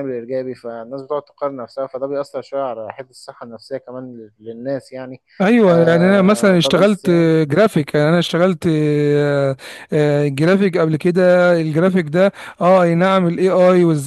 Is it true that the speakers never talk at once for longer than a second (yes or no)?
no